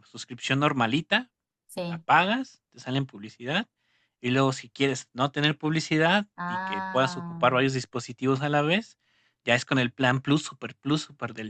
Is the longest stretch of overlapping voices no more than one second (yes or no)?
no